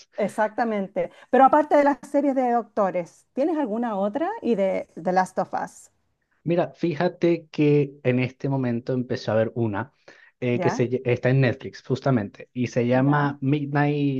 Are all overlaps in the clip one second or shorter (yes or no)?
yes